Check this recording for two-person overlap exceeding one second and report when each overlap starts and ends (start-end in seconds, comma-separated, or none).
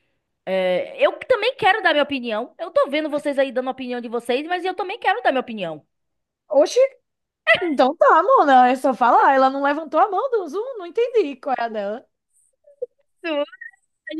none